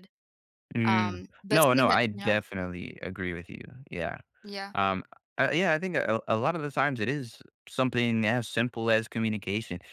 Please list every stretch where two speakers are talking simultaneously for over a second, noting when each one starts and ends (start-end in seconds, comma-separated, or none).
0.9-2.4